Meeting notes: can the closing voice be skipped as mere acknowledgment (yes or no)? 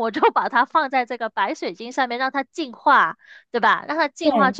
yes